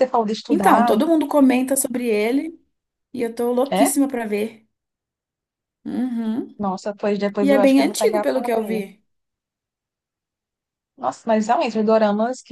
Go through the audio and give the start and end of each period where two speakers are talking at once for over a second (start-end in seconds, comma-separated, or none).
7.4-8.8